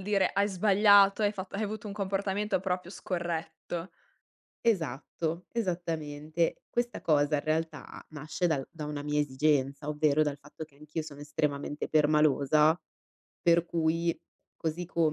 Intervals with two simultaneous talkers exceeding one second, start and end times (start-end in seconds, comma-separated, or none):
none